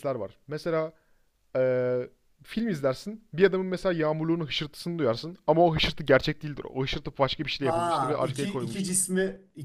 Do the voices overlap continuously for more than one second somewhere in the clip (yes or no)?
yes